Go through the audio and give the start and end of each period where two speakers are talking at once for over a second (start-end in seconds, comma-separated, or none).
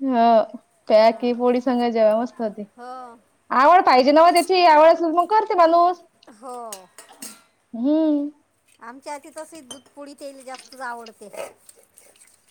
none